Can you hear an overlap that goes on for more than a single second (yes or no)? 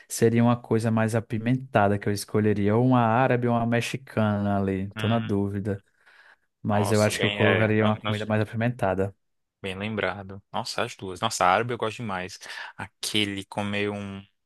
yes